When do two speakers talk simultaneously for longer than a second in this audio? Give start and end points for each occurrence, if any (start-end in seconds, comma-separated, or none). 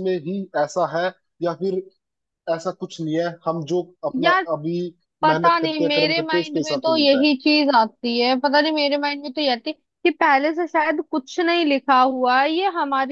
5.3-7.3